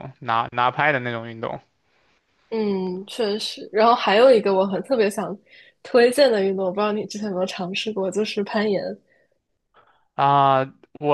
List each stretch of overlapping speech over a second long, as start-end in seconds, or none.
none